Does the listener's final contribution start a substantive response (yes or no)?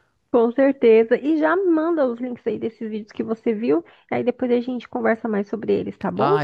yes